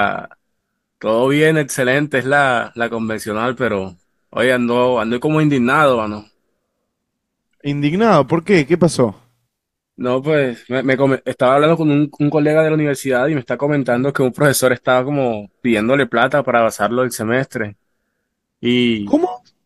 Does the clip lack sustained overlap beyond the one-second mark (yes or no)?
yes